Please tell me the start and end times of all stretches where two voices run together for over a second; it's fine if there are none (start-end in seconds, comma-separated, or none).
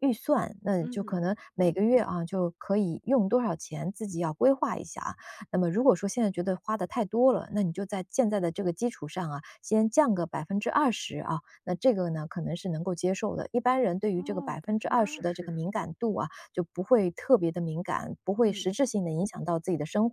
14.2-15.6